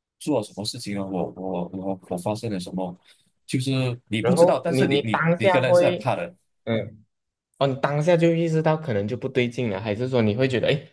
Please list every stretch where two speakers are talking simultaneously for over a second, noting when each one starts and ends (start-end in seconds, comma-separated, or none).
4.2-6.1